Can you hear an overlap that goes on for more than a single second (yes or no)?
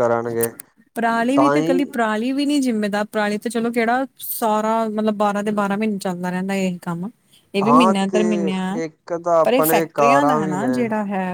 yes